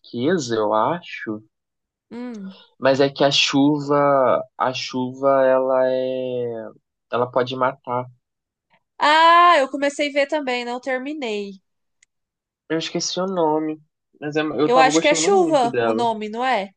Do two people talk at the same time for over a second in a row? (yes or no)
yes